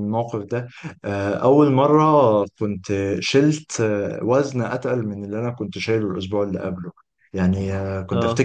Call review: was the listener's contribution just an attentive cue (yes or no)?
yes